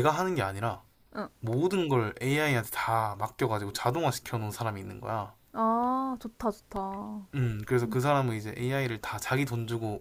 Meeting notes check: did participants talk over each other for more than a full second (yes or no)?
no